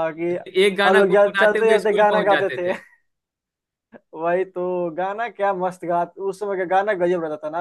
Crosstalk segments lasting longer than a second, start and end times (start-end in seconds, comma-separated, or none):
0.8-2.7